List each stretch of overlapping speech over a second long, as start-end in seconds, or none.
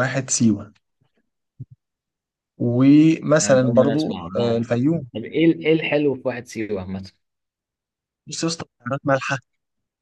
3.4-4.7